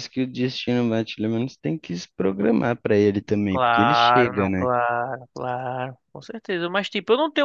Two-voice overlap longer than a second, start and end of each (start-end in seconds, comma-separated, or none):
3.5-4.7